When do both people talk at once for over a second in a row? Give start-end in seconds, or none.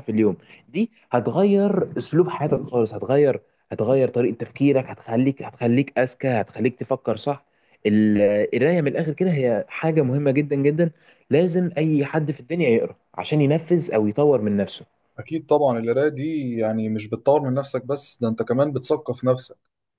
none